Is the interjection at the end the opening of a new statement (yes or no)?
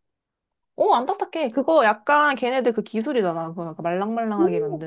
yes